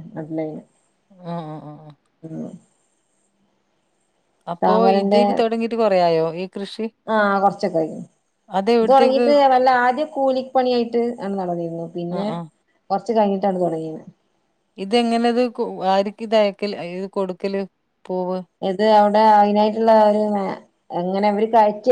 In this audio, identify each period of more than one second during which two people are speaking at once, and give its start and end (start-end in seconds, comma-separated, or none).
none